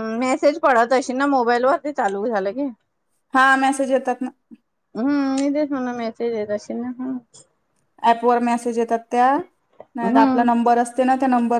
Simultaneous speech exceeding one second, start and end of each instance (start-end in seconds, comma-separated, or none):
none